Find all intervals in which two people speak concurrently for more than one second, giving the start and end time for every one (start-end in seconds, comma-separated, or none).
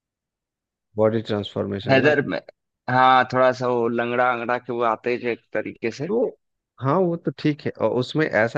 none